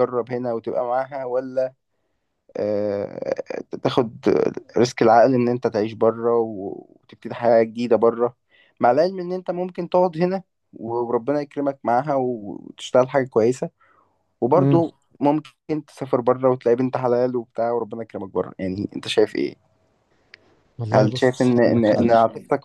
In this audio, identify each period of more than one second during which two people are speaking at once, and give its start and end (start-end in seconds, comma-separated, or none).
20.9-22.1